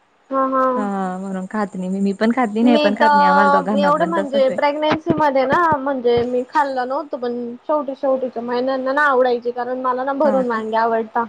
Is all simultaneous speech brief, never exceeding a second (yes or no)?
no